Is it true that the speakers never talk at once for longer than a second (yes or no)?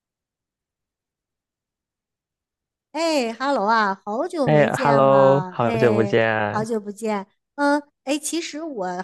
no